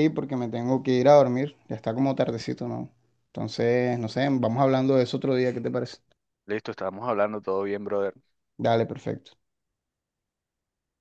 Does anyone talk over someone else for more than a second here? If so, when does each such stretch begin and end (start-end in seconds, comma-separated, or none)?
none